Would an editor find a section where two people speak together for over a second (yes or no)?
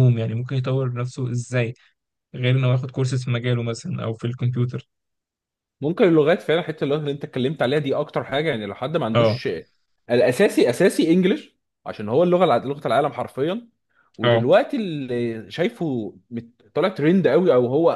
no